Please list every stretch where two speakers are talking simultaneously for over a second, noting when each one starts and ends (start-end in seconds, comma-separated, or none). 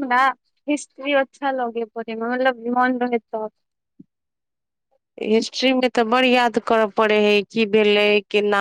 none